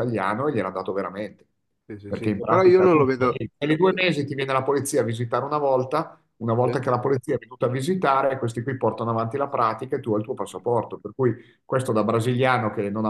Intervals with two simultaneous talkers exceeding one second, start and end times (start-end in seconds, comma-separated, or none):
2.1-3.4